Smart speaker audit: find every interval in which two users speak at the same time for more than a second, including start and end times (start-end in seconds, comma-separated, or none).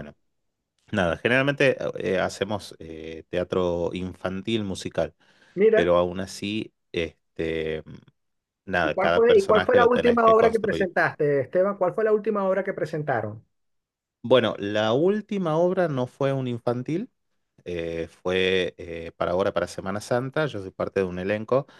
8.8-10.9